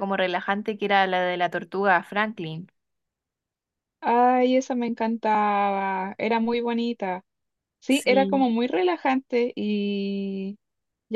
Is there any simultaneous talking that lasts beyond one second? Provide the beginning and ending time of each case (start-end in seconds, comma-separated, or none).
none